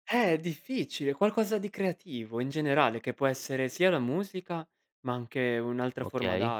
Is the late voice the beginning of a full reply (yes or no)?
no